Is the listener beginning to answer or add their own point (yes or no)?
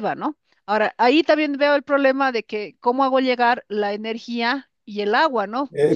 yes